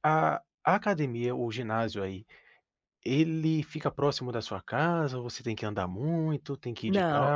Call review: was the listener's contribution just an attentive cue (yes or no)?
no